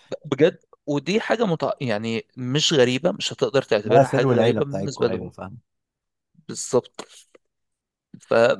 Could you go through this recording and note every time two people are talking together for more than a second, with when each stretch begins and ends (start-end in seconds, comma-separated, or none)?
3.8-5.3